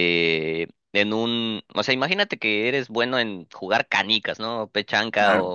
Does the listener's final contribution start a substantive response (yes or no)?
no